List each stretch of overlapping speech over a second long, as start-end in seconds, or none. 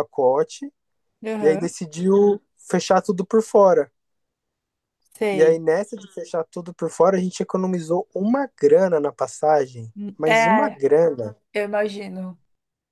none